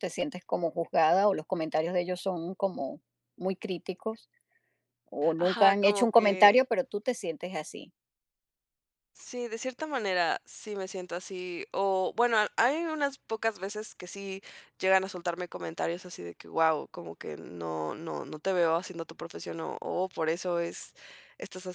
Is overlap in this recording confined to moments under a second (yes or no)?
no